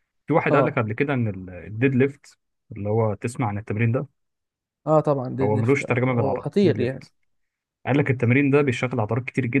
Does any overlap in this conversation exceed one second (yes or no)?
yes